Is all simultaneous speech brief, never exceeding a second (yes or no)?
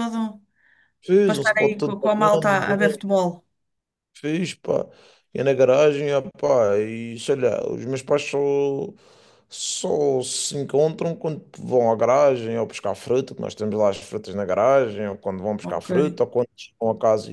no